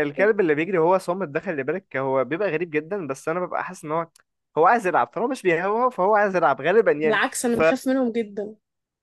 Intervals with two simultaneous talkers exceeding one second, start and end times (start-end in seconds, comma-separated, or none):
none